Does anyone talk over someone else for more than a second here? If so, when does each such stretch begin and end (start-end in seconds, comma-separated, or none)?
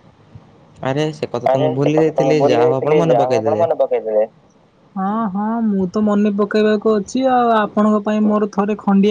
1.5-3.6